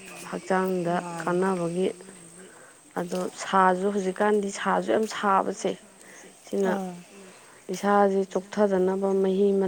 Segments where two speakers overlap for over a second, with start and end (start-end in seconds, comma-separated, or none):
3.6-5.8